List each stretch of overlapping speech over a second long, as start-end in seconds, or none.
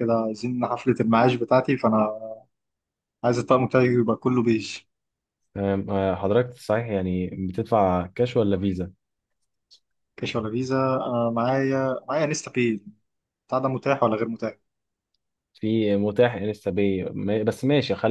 none